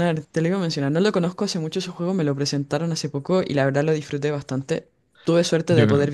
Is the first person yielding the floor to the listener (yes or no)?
no